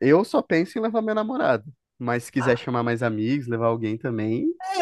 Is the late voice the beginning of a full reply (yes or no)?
yes